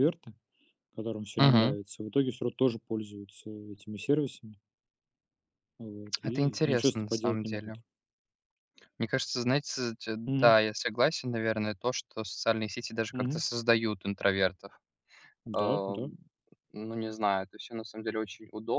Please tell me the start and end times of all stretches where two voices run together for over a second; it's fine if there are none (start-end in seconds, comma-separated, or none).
6.2-7.8